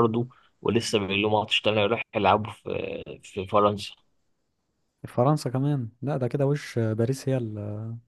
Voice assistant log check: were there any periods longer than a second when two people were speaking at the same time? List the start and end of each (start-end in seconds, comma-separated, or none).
none